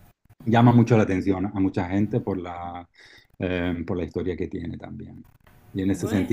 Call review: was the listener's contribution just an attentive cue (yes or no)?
yes